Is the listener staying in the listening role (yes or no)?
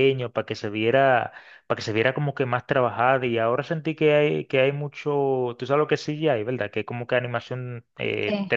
no